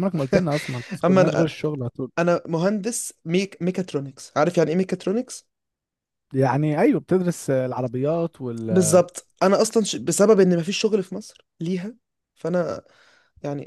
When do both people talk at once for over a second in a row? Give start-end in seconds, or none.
none